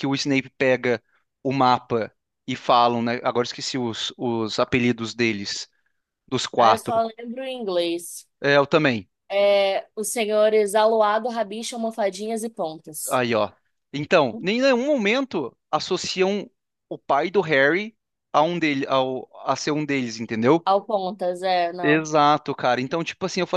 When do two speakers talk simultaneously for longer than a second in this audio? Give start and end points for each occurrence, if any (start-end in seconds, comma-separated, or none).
none